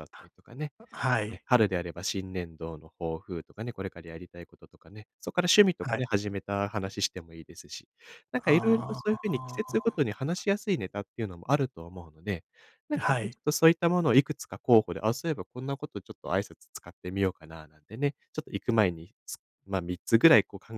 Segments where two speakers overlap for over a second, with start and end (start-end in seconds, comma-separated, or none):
8.4-10.0